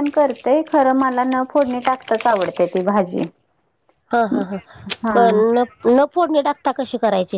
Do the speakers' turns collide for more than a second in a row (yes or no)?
no